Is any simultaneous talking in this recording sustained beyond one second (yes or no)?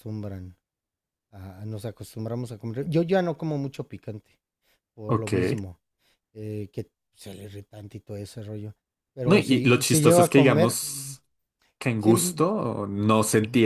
yes